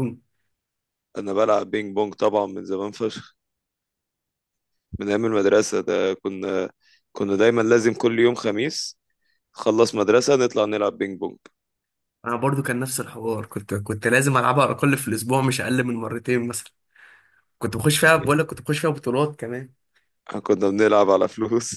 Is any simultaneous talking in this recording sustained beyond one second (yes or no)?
no